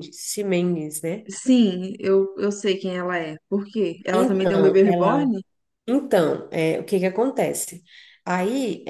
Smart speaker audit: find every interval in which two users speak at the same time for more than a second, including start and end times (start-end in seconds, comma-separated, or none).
4.1-5.3